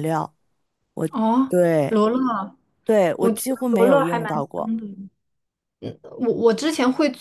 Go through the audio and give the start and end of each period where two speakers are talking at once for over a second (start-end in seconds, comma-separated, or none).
3.1-4.7